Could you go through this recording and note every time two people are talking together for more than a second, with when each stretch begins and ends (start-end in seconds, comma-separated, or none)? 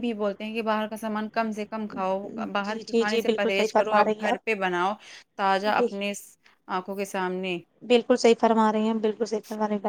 2.7-4.5